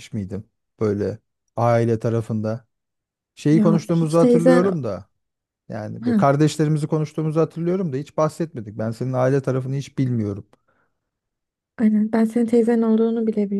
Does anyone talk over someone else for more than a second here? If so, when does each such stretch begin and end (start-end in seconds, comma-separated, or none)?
3.5-4.7